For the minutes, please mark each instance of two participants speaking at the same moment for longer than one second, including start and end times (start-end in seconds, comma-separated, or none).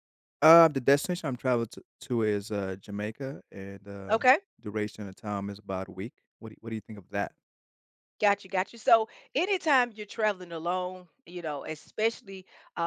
none